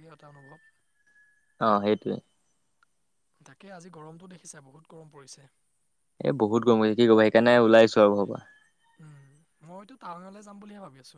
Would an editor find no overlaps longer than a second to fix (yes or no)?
yes